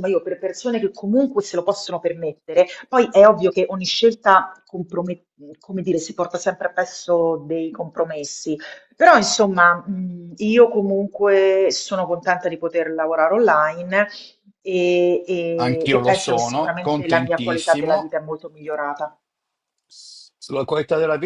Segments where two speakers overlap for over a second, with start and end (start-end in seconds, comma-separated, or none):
15.6-18.1